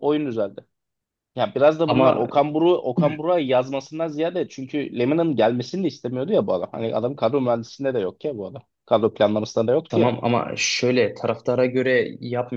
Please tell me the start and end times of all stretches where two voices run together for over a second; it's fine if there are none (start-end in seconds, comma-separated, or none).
none